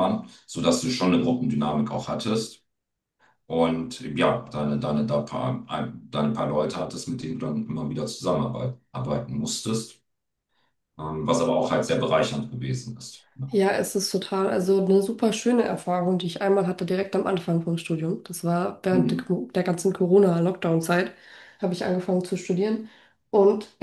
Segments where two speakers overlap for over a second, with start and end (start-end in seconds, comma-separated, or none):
none